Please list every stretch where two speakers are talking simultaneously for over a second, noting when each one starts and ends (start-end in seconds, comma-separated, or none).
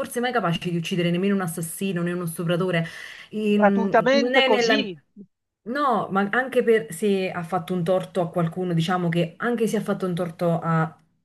3.5-4.9